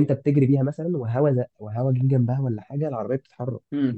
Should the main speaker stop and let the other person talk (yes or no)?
yes